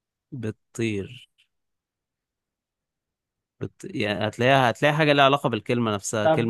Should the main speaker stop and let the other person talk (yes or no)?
yes